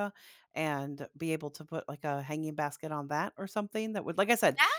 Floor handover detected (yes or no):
yes